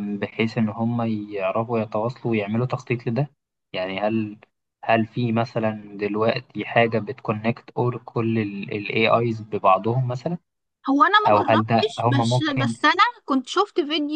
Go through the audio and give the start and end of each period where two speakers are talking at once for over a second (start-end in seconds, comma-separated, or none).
11.2-12.7